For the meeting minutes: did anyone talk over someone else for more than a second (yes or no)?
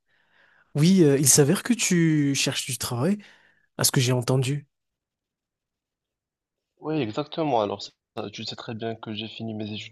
no